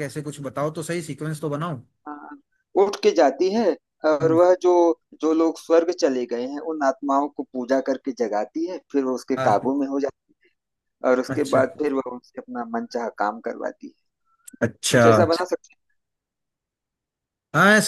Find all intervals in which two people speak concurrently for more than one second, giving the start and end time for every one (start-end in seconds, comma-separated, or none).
none